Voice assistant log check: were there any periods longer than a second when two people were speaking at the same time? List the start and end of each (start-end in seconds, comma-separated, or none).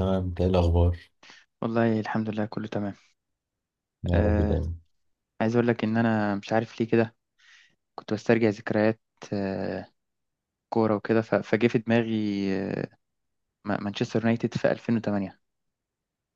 none